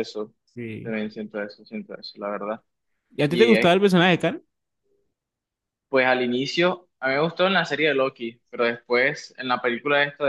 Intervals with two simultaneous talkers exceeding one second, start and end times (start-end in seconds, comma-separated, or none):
none